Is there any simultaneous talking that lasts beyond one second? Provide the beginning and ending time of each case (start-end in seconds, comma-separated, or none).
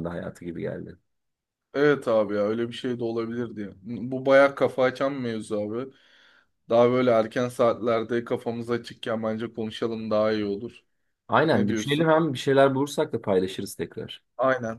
none